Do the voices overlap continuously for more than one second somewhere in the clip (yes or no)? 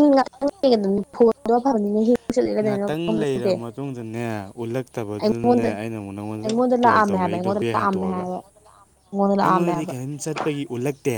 yes